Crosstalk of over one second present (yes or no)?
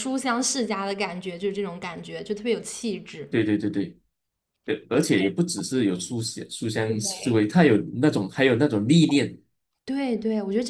no